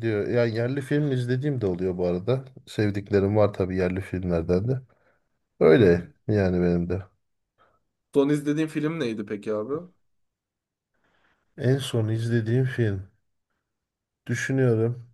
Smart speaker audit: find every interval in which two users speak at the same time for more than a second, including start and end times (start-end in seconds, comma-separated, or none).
none